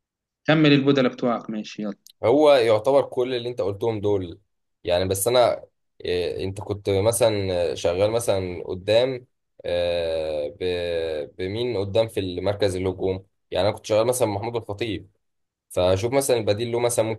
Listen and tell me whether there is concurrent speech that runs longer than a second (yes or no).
no